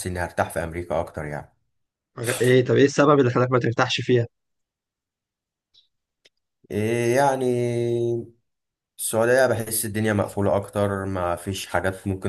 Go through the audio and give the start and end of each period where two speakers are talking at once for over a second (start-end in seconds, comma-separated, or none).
none